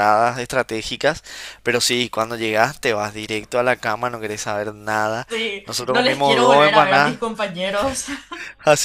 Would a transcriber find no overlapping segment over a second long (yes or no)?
no